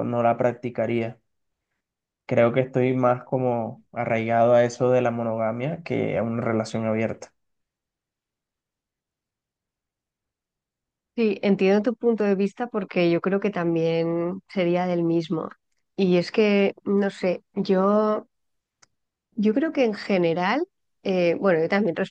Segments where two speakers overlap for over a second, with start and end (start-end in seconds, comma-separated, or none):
none